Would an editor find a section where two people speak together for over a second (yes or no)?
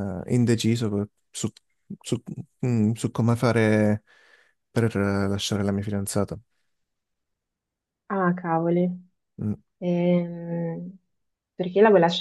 no